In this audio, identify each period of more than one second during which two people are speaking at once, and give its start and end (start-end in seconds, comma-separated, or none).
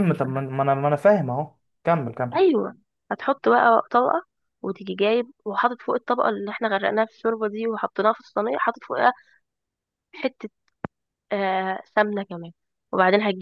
none